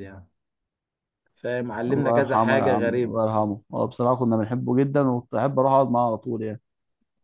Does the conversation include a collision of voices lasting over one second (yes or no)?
yes